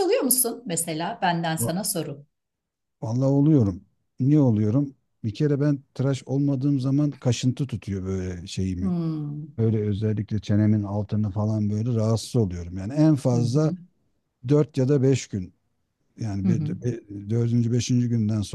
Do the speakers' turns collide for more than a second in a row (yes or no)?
no